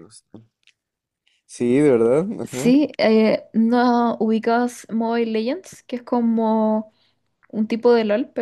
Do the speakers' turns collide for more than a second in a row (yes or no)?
no